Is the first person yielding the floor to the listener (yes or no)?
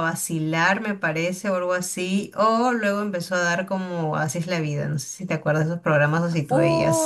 yes